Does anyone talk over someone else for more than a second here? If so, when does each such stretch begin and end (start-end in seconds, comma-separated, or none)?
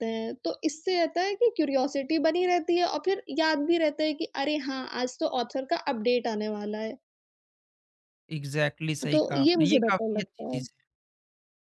9.1-10.6